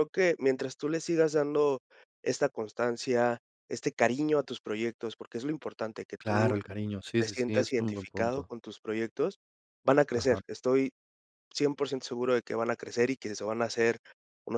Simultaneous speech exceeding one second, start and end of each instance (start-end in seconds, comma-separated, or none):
7.2-8.5